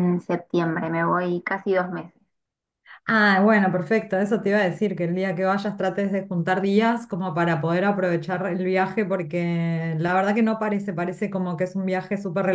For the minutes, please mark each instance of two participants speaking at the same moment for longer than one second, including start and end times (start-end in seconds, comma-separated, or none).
none